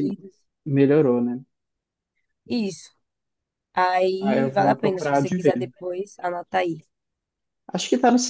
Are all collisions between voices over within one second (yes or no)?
no